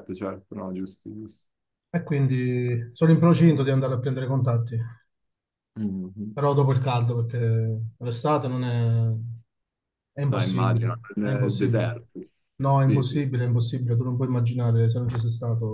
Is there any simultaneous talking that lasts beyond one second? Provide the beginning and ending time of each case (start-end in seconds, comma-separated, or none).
10.3-11.9